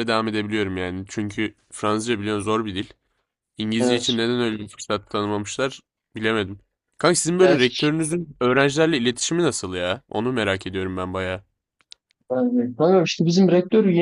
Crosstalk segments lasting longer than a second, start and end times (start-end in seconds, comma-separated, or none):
none